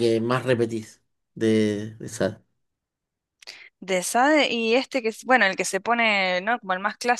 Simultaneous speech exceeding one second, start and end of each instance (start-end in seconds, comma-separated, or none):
none